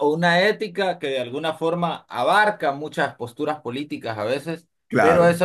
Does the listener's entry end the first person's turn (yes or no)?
no